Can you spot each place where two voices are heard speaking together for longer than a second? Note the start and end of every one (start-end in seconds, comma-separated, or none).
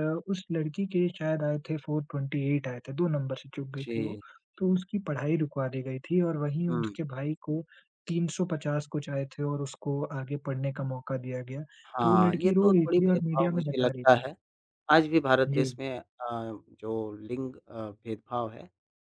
12.0-14.2